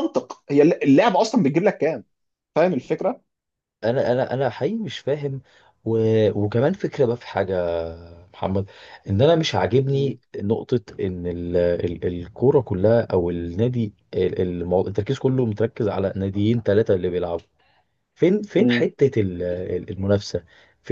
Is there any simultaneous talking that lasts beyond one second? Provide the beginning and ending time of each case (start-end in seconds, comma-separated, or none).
none